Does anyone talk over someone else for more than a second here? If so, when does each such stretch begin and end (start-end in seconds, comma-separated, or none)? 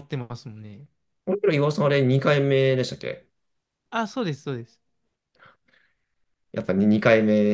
none